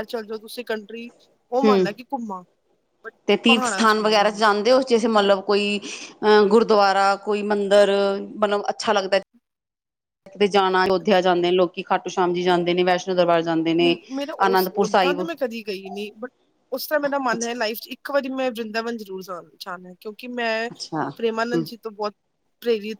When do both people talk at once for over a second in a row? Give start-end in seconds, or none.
none